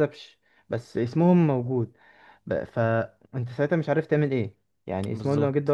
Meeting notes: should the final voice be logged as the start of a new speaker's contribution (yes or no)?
no